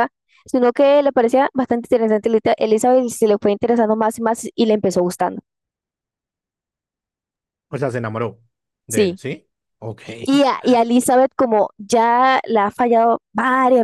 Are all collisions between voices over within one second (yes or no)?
yes